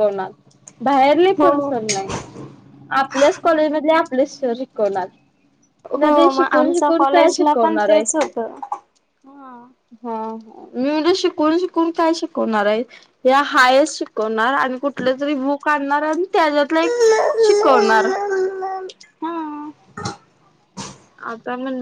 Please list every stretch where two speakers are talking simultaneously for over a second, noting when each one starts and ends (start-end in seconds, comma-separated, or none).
6.0-8.0